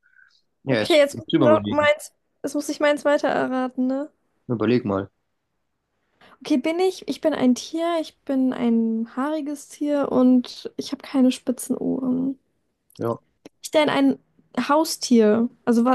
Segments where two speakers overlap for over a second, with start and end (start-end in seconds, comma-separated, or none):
0.7-1.9